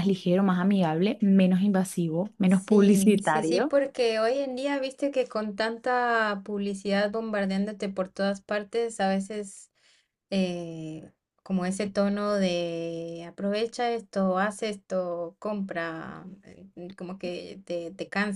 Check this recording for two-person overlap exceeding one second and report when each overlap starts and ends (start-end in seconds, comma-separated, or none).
2.5-3.8